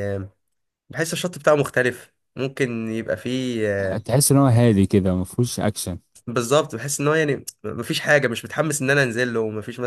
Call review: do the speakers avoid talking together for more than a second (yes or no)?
yes